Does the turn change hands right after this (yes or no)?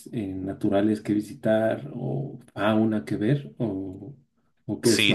yes